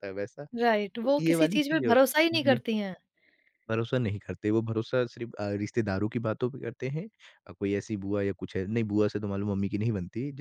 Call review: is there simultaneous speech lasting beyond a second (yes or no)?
yes